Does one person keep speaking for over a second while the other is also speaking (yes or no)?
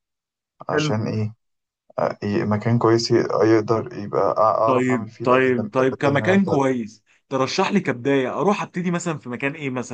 yes